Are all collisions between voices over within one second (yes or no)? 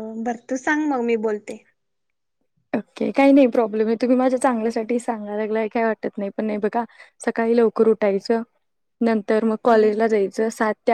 yes